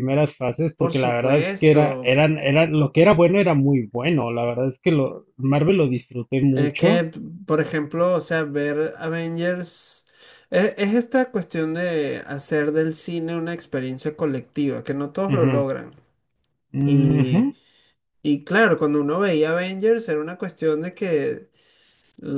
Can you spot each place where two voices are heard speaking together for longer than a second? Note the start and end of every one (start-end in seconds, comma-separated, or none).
0.8-2.1